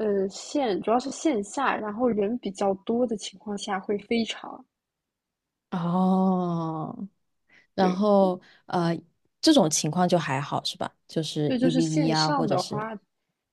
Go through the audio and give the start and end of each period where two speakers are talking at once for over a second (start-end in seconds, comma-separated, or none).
11.4-12.9